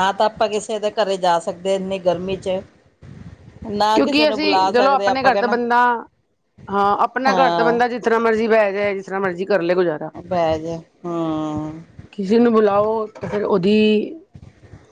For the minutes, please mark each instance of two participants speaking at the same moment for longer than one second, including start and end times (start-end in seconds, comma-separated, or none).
4.0-5.5